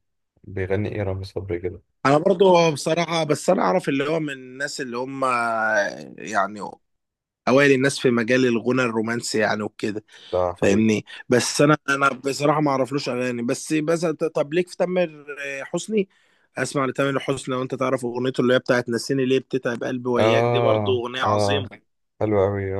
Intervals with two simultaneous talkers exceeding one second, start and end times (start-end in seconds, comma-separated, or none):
20.2-21.7